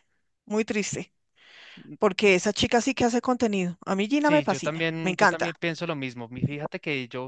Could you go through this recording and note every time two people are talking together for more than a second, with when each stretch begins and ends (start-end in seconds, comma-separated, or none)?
4.2-5.5